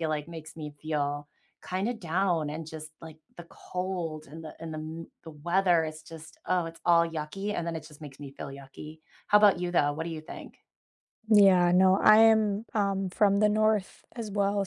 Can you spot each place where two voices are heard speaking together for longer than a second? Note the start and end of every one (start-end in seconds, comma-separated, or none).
none